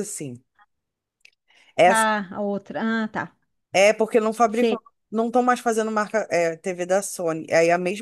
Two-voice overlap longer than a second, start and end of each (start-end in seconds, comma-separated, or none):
none